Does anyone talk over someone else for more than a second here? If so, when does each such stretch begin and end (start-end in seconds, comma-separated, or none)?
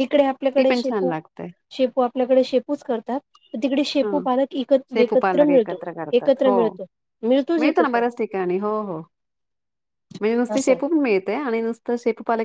4.9-6.4